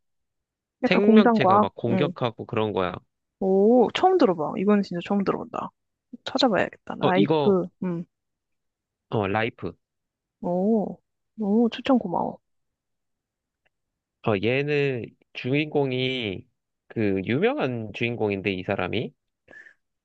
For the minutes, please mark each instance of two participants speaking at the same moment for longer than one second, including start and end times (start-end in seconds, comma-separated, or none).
0.9-2.1